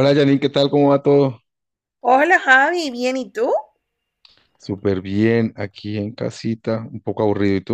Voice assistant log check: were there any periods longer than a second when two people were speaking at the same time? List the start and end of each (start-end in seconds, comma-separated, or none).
none